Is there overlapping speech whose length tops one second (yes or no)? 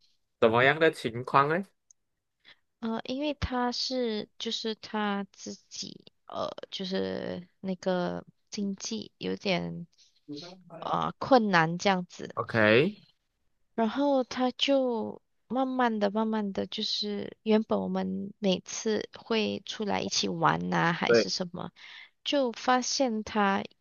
no